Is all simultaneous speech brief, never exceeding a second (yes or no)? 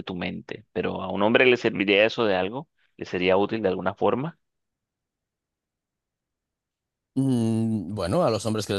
yes